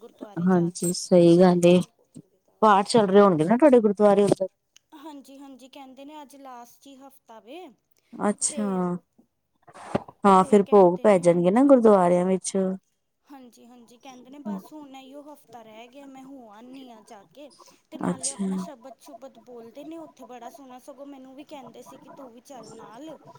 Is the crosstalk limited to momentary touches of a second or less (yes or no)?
no